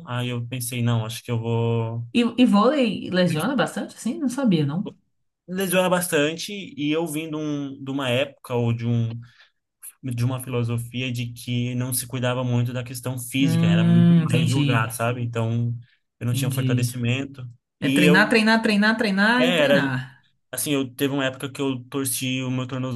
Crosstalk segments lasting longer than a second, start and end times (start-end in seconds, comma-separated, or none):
13.4-14.9